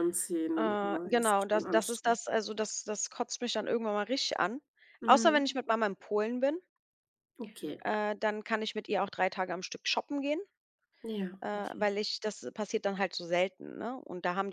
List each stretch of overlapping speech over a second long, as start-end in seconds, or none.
0.6-2.2